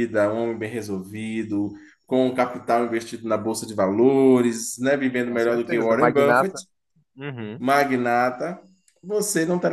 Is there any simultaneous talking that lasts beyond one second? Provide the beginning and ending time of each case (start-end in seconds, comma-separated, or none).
5.2-6.6